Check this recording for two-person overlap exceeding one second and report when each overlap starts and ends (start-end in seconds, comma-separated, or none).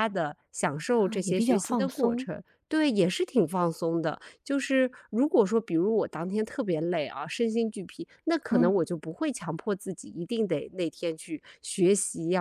0.9-2.3